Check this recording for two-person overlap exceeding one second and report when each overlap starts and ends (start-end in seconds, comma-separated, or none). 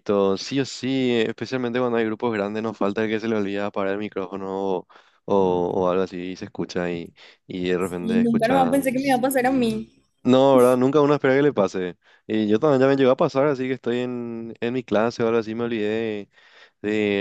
7.8-9.2